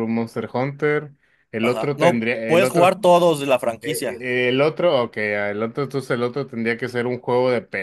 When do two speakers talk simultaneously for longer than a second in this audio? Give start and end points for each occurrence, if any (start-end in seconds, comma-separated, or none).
1.6-3.0